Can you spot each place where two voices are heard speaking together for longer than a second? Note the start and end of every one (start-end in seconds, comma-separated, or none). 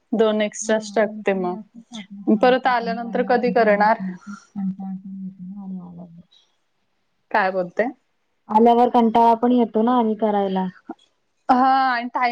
0.7-4.0